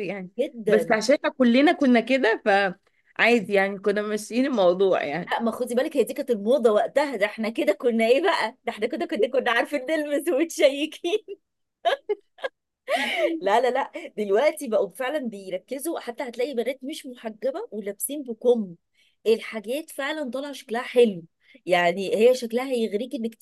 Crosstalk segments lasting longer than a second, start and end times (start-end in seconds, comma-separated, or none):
none